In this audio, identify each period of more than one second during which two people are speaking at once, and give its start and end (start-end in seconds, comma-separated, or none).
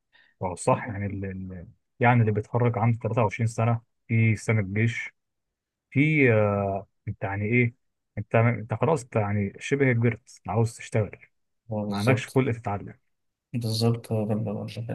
none